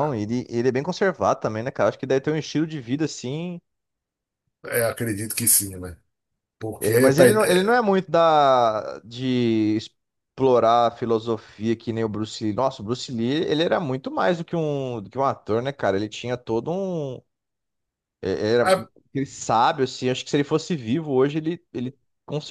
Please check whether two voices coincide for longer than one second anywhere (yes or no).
no